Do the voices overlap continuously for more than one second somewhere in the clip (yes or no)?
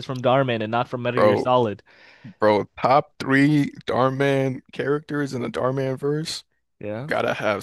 no